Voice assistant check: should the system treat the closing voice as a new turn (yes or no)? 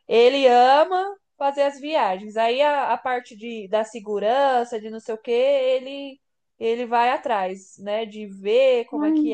no